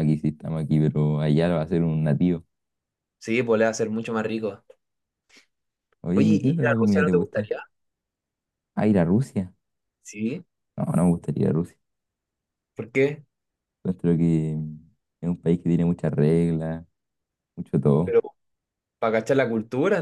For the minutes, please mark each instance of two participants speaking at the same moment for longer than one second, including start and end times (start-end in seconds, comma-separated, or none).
6.1-7.5